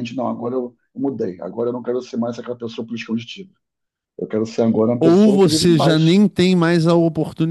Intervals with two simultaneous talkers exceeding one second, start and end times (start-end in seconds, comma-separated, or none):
5.0-6.2